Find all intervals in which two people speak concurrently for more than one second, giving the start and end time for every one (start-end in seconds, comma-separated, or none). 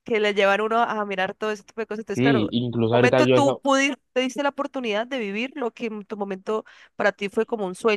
2.1-3.6